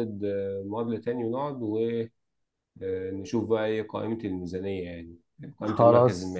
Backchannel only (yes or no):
no